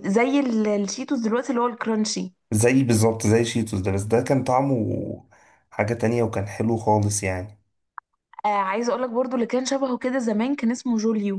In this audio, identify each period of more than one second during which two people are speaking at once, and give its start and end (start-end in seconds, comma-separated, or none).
none